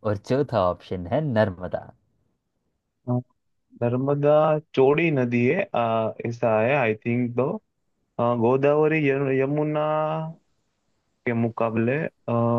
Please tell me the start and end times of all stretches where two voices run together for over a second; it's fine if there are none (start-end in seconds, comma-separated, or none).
none